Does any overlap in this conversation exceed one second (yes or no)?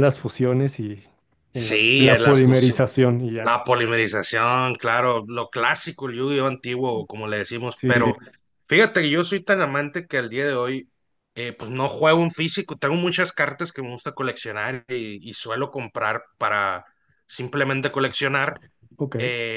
yes